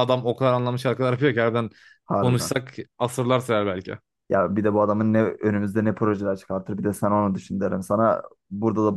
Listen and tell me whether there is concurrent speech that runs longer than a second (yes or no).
no